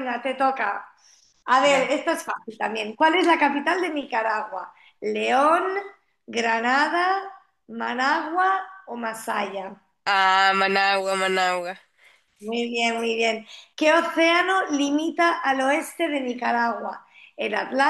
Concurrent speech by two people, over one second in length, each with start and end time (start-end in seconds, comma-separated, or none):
none